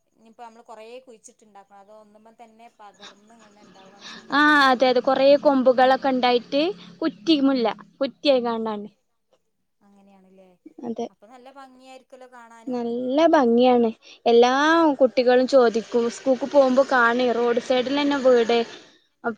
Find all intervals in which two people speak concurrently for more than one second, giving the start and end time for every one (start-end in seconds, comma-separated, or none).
none